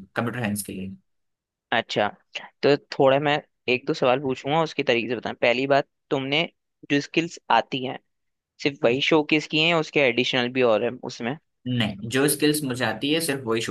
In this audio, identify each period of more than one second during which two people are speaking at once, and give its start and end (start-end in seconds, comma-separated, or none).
none